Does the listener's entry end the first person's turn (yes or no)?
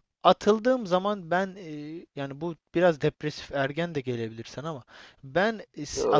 no